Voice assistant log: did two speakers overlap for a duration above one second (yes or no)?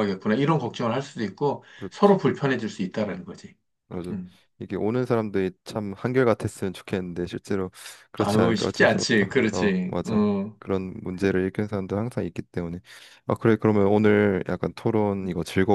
yes